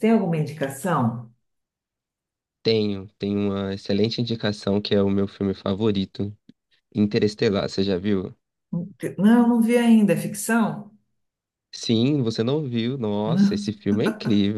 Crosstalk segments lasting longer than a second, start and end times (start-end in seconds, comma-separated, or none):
none